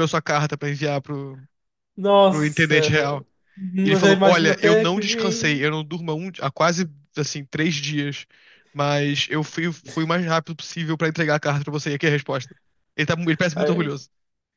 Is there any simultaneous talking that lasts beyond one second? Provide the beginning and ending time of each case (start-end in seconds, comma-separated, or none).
3.8-5.7